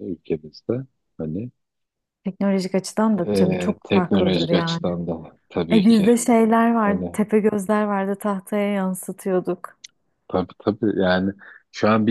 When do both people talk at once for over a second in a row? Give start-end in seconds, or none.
3.2-5.0